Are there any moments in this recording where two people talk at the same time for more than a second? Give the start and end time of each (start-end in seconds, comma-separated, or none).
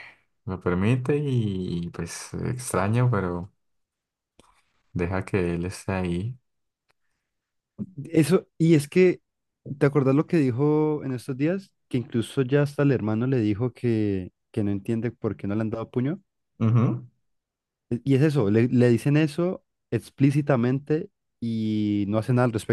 none